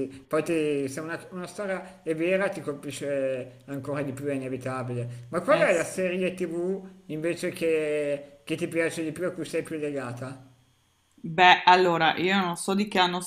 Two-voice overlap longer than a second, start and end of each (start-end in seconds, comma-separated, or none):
none